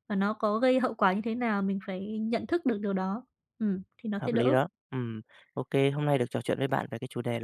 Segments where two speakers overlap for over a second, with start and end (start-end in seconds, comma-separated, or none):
none